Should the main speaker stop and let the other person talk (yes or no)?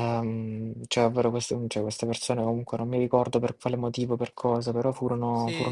yes